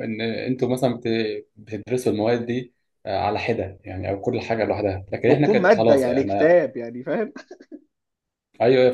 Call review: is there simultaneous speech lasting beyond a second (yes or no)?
yes